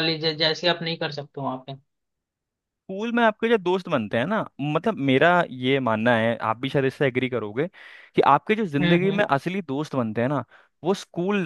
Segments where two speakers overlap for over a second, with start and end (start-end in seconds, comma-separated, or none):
none